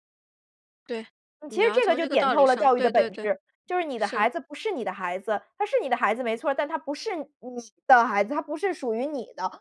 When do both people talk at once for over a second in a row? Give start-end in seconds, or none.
1.5-3.3